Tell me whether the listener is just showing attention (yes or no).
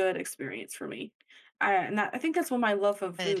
yes